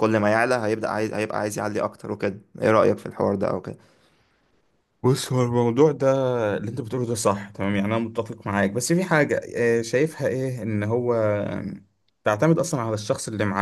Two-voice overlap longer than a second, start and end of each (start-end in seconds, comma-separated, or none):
none